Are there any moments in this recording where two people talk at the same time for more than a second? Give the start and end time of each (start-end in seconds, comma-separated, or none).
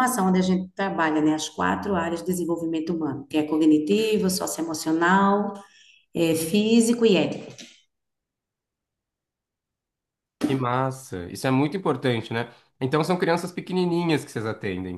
none